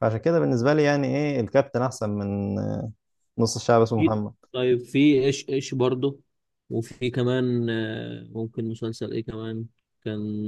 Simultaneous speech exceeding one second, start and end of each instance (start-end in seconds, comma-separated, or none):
none